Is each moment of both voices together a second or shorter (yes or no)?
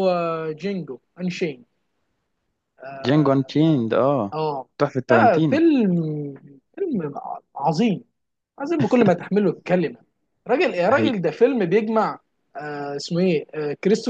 yes